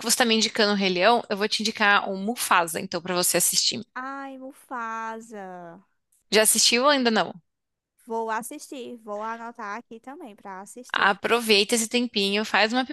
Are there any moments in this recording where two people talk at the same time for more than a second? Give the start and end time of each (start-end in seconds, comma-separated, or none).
none